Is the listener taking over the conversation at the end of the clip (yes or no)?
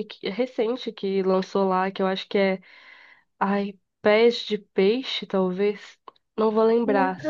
no